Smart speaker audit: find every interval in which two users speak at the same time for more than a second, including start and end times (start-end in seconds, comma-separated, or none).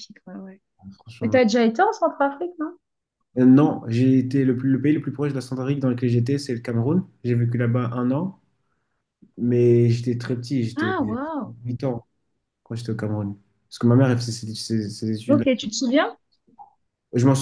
none